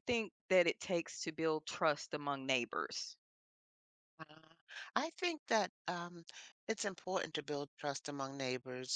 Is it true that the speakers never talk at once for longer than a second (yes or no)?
yes